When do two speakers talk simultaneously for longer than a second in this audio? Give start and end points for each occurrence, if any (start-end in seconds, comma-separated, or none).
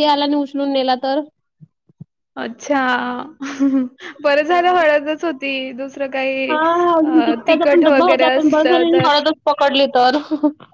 7.5-9.1